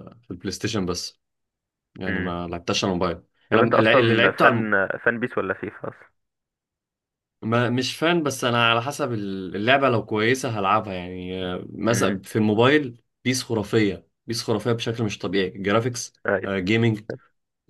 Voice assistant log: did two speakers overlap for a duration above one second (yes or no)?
yes